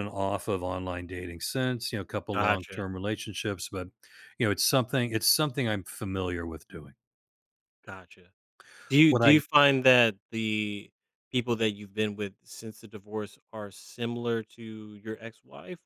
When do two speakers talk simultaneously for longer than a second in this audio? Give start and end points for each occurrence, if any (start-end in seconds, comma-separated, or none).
none